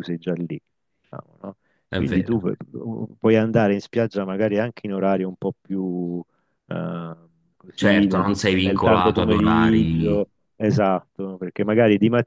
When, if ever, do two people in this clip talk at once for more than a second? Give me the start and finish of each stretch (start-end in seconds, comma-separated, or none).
7.7-10.2